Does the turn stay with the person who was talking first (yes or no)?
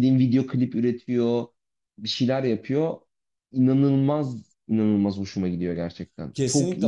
no